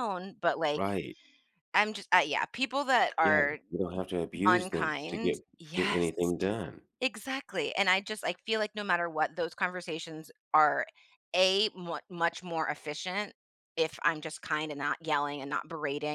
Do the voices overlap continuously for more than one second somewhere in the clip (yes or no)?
yes